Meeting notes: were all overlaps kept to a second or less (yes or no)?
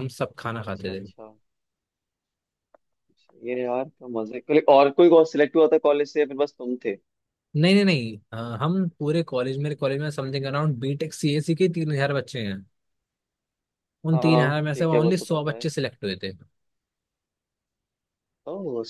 no